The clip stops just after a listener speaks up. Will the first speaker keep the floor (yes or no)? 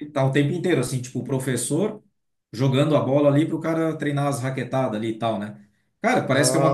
yes